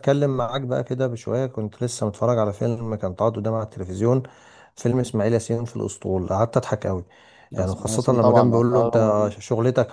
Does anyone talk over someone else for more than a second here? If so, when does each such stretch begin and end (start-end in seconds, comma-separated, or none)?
7.6-9.4